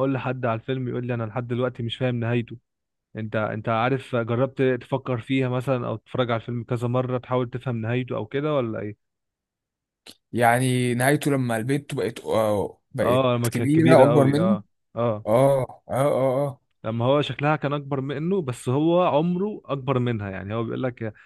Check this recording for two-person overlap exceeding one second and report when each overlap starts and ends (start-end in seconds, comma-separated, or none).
13.0-14.6